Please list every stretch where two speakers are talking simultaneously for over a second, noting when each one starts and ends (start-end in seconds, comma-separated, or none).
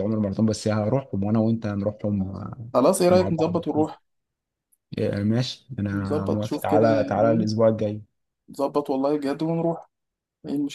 5.9-7.5